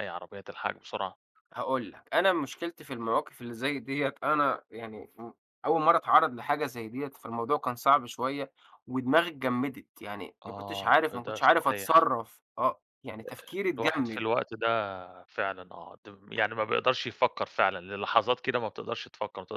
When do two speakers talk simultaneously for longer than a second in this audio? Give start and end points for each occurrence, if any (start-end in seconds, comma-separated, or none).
10.5-12.0